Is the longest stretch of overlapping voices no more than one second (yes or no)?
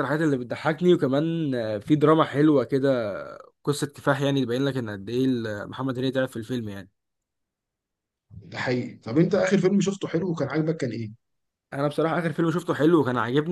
yes